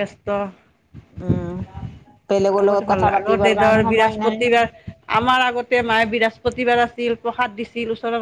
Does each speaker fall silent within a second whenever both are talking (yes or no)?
no